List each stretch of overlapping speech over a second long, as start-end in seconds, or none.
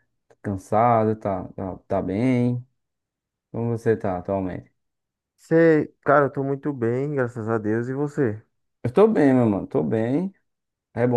none